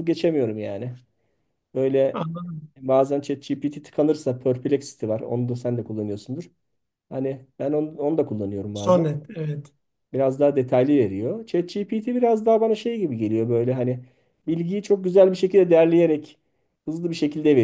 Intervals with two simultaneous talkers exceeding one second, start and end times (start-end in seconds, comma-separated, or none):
none